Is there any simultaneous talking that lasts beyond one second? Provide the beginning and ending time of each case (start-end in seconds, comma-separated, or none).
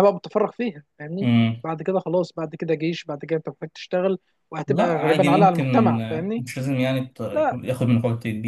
4.7-6.5